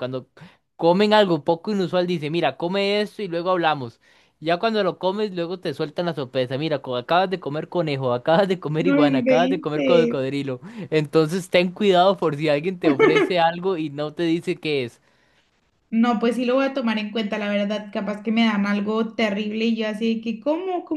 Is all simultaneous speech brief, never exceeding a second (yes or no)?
no